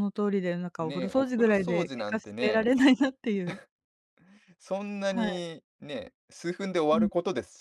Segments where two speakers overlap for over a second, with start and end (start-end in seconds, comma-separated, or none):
0.8-2.8